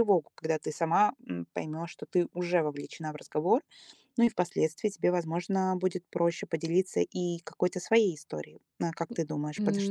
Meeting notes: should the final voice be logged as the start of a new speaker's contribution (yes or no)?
yes